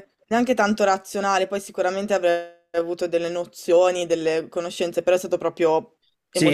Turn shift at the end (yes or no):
yes